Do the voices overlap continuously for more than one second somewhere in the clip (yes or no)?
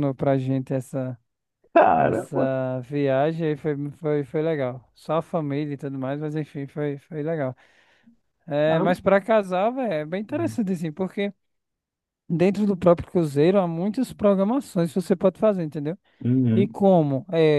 no